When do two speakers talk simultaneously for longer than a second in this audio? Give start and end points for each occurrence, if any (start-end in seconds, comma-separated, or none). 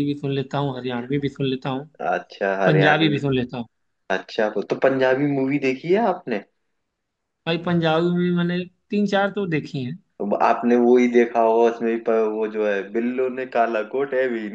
none